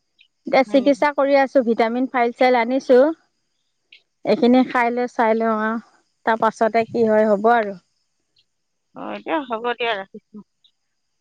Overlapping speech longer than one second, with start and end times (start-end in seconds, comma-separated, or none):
none